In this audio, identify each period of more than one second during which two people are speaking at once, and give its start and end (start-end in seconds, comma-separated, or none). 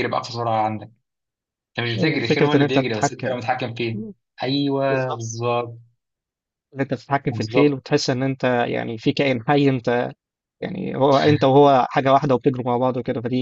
1.9-3.4